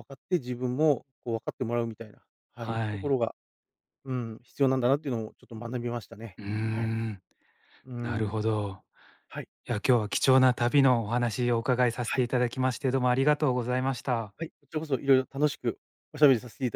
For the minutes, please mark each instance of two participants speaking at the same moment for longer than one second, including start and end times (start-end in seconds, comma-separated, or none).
none